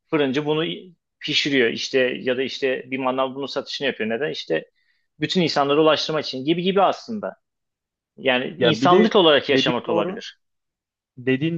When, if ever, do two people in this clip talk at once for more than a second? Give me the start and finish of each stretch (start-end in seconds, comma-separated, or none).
8.6-10.2